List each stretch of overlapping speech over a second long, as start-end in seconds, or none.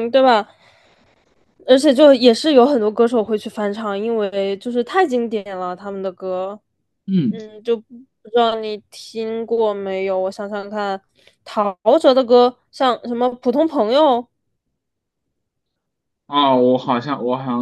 none